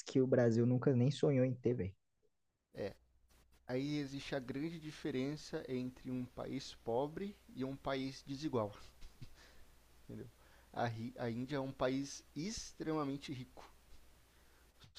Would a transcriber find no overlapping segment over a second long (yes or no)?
yes